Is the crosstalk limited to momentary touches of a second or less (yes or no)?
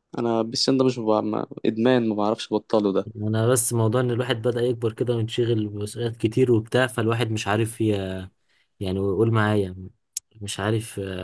yes